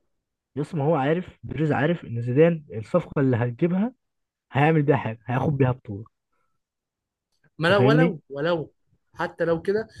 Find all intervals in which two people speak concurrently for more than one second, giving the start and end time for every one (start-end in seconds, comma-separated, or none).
none